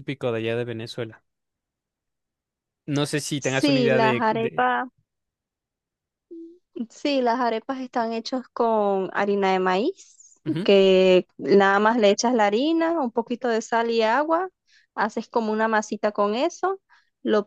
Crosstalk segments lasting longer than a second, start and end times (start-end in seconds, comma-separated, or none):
3.4-4.7